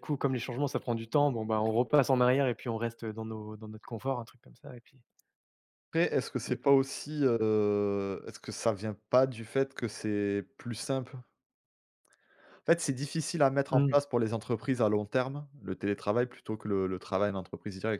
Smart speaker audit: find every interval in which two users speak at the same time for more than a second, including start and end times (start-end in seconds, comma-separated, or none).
none